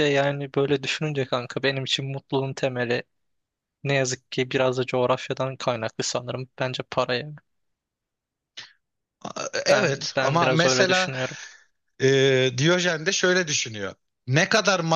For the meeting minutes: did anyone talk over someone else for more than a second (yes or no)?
yes